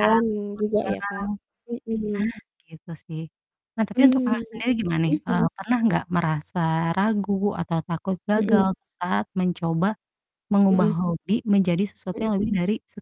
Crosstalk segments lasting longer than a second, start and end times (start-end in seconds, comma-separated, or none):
none